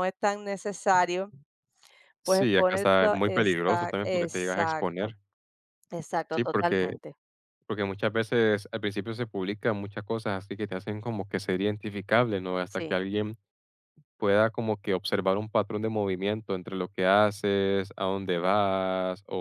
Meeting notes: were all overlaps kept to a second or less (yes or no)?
no